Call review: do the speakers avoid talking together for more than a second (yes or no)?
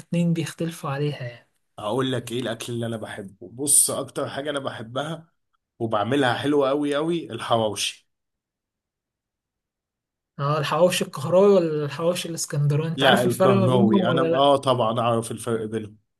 no